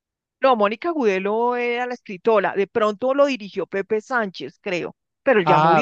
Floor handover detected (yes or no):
yes